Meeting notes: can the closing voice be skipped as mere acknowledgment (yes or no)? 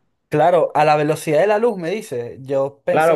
no